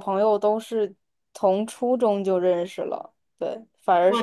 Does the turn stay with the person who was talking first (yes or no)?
yes